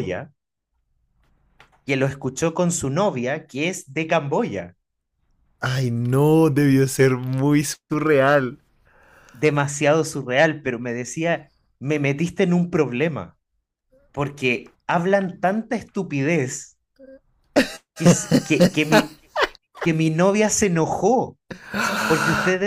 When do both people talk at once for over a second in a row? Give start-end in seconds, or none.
none